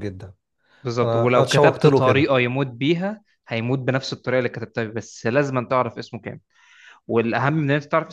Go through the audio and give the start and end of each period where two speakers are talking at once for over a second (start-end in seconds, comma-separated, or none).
1.0-2.3